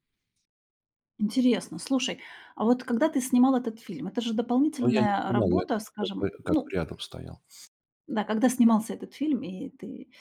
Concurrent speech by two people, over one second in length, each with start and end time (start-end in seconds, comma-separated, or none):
4.8-6.8